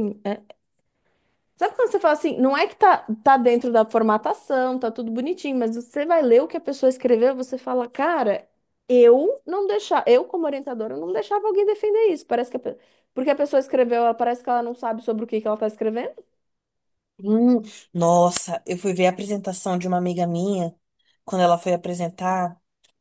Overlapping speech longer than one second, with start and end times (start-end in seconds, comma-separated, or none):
none